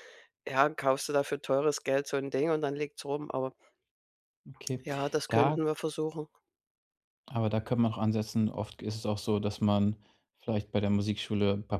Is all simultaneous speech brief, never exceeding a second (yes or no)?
yes